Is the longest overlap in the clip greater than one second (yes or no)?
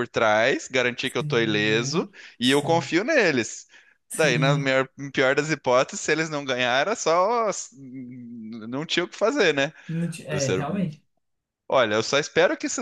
yes